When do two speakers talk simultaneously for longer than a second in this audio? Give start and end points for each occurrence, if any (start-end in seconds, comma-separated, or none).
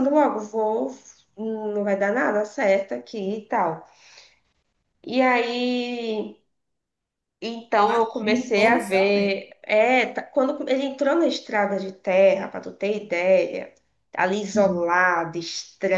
7.8-9.5